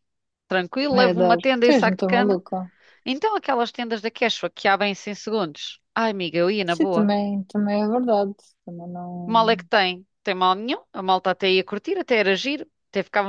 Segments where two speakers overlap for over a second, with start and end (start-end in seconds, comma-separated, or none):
0.9-2.4